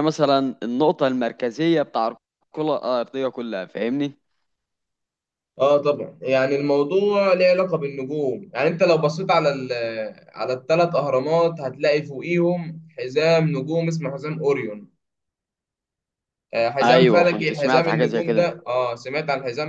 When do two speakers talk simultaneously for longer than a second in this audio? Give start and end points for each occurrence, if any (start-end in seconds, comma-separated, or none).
16.8-18.5